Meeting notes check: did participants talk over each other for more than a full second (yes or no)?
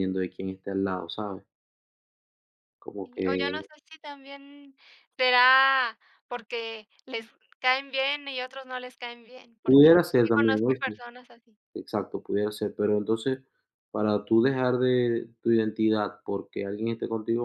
yes